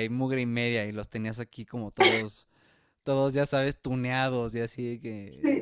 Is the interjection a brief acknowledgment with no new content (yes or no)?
no